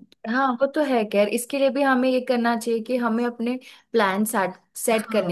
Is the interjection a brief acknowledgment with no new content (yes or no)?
yes